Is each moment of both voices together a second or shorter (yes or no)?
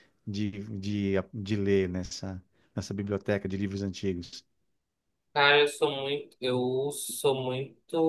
yes